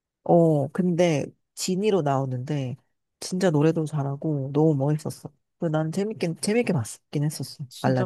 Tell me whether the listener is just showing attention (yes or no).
no